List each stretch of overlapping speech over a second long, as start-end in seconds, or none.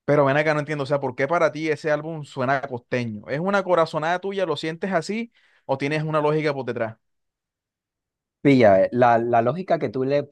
none